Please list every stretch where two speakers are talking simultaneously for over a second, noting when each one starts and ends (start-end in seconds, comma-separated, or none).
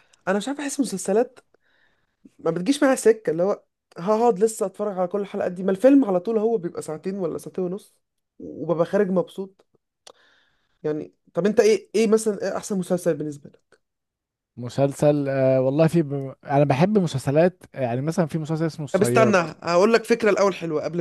none